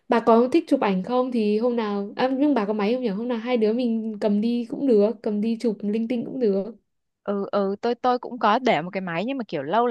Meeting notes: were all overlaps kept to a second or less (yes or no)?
yes